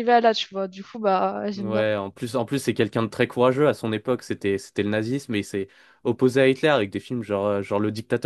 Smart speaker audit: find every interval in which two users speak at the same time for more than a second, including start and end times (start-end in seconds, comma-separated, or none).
none